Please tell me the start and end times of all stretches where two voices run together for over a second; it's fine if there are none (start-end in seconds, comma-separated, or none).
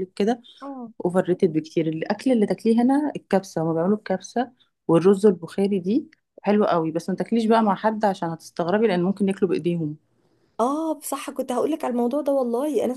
none